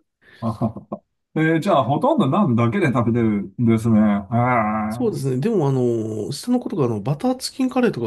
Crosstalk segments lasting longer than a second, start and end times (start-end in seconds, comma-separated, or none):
none